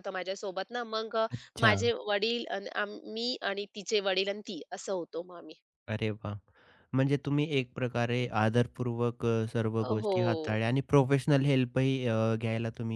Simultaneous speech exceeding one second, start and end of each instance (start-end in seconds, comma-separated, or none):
none